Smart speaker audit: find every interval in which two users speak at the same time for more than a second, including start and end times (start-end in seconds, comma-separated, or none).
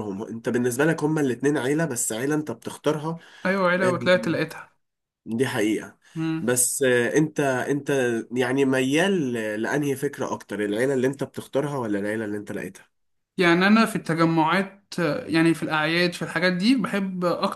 none